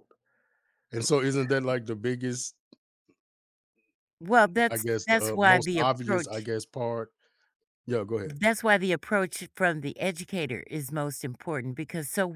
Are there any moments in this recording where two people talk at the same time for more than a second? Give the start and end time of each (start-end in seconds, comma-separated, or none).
4.7-6.5